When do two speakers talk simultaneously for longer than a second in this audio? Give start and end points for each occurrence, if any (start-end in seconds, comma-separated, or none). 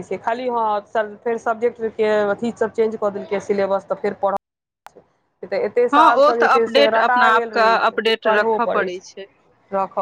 5.9-9.0